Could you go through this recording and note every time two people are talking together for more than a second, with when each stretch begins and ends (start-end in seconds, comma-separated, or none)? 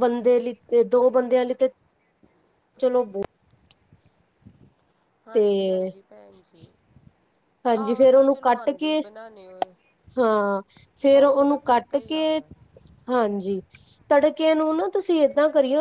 7.7-9.0, 11.1-12.4